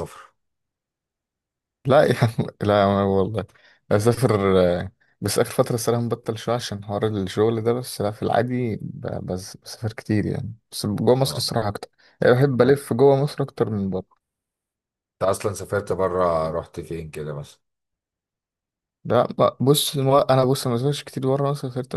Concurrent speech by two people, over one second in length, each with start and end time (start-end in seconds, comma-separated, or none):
none